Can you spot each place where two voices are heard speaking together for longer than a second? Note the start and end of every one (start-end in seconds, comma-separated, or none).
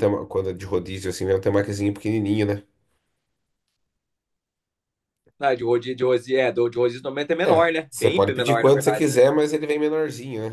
7.4-9.2